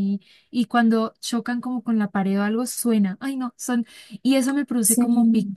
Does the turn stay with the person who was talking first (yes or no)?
yes